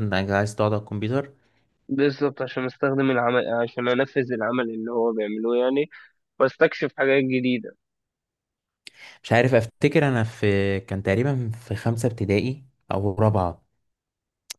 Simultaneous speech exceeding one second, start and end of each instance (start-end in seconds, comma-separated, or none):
none